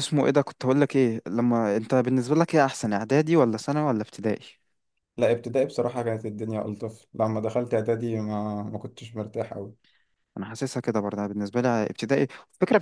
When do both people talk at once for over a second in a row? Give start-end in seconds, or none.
none